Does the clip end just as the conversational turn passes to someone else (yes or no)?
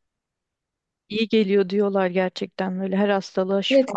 yes